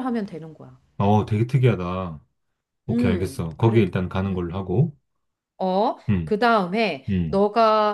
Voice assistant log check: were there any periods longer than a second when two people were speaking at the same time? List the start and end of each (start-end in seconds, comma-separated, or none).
2.9-4.7